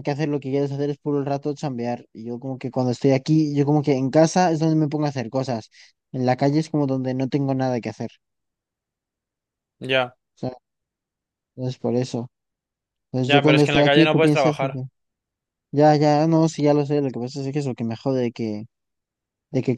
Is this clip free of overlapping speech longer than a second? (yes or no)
no